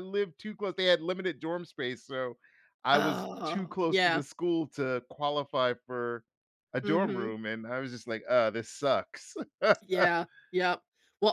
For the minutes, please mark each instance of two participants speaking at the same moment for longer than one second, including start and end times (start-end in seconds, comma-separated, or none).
2.9-4.2